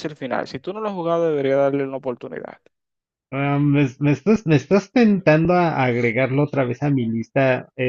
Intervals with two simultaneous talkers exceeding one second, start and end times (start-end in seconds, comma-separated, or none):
none